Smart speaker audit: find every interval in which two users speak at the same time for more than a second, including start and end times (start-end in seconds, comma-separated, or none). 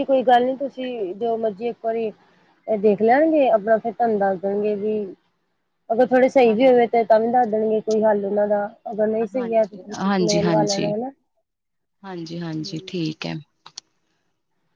9.1-10.9